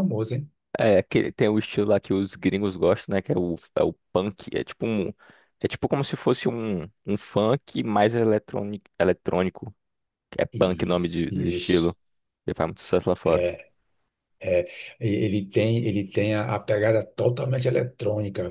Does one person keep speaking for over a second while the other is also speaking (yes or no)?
yes